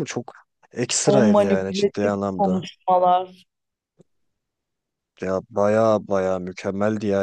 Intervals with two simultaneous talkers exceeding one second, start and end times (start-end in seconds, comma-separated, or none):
1.1-2.6